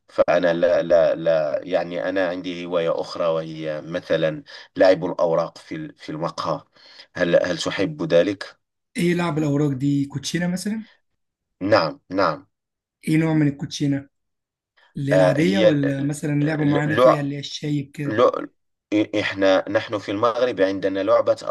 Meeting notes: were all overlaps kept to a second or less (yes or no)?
no